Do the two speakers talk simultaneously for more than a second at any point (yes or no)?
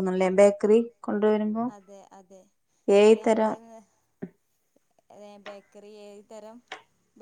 no